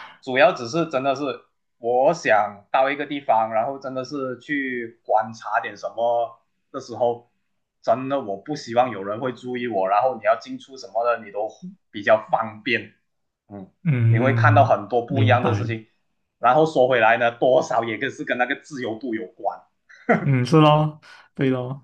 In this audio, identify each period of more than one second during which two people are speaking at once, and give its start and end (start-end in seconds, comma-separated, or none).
14.1-15.8